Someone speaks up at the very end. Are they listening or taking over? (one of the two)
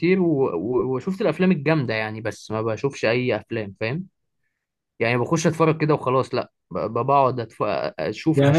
taking over